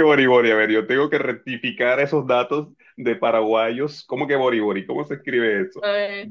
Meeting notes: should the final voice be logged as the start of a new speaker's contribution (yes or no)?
yes